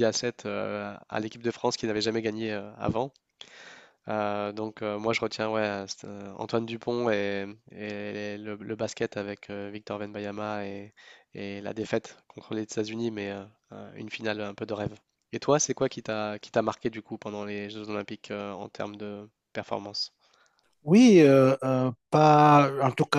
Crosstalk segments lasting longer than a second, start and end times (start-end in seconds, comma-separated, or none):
none